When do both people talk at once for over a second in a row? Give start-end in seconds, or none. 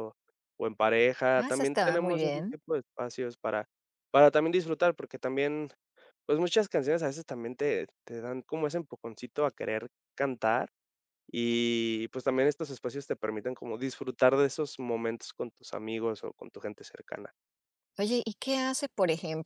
1.4-2.6